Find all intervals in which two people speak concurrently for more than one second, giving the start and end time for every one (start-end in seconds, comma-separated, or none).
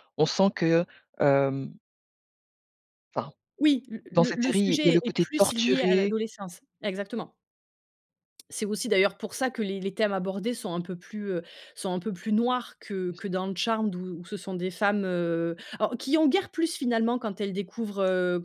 4.1-6.1